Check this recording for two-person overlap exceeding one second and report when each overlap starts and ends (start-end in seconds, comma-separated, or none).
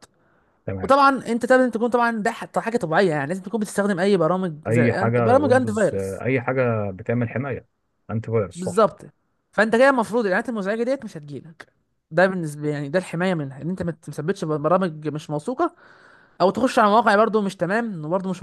4.7-6.2